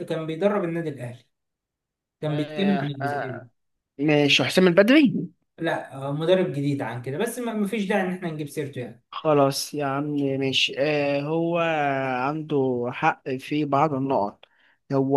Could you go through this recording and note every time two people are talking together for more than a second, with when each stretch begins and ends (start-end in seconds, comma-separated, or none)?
2.3-3.5